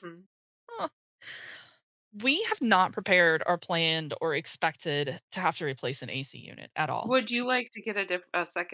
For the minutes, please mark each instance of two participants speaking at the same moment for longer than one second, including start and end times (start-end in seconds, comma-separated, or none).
none